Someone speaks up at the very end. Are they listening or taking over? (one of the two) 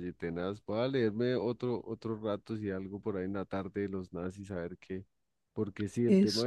listening